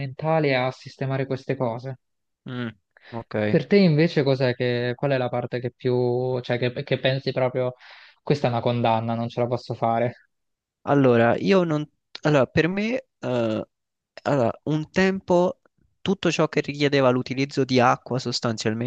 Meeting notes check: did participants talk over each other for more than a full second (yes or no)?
no